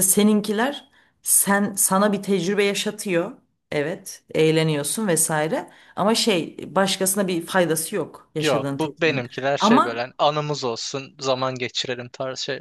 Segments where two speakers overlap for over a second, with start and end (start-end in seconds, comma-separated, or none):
8.4-10.1